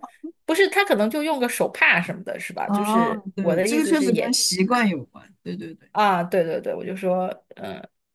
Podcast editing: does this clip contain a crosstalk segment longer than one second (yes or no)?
yes